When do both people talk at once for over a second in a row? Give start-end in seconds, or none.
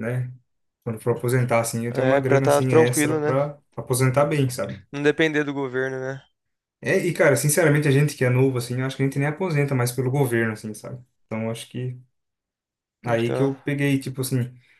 1.9-3.4